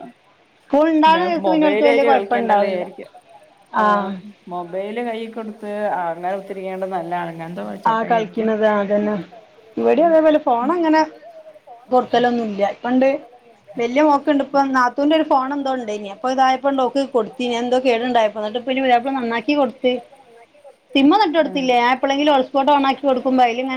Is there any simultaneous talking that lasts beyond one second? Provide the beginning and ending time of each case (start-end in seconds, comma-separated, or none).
1.1-2.8